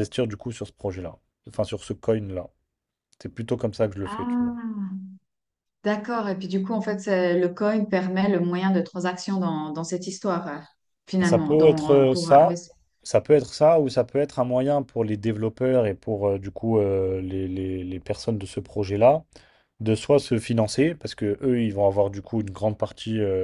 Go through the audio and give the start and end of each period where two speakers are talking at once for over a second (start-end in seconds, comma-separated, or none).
11.2-12.5